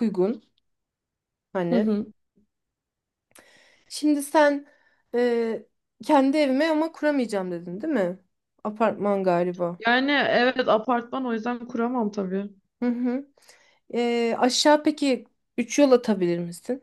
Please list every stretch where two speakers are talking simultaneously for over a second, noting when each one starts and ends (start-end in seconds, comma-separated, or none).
none